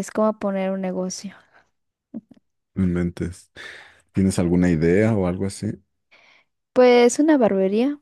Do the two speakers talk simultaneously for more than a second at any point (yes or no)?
no